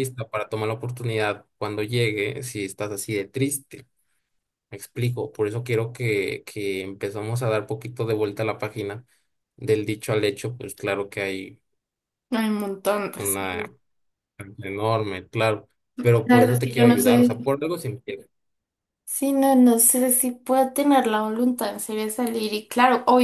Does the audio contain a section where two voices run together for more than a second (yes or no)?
yes